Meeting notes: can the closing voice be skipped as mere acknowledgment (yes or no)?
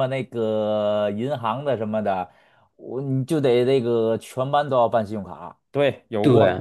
no